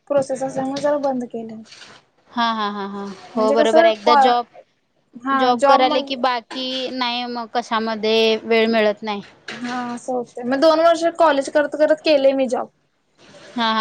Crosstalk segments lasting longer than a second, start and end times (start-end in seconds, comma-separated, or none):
none